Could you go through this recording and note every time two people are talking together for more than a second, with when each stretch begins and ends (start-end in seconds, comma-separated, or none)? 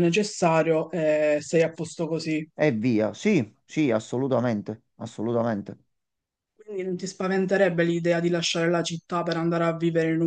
none